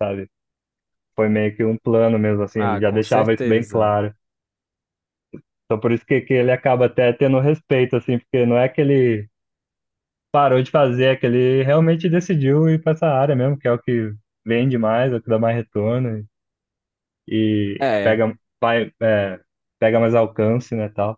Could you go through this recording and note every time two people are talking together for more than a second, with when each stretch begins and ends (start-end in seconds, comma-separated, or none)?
2.5-4.0